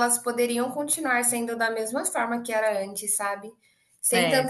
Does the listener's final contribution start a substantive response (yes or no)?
no